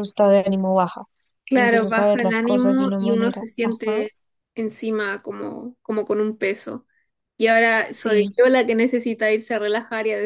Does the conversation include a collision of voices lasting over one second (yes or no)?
yes